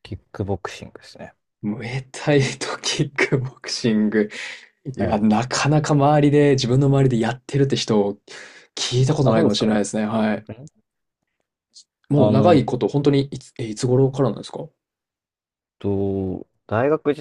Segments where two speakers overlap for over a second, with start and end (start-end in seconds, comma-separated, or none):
none